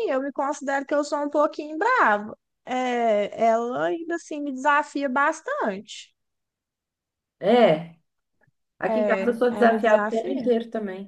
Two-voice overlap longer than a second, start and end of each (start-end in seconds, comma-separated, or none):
8.9-10.5